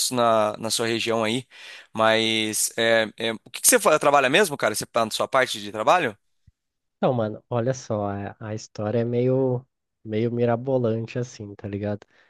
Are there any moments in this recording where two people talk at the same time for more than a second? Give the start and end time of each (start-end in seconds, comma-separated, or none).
none